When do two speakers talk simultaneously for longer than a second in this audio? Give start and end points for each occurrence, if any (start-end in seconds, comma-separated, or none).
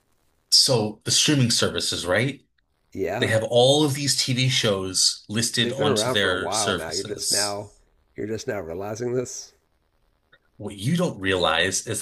5.6-7.6